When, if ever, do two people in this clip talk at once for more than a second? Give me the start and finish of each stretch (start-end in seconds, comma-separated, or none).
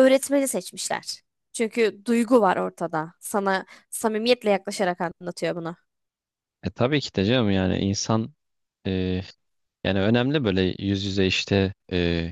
none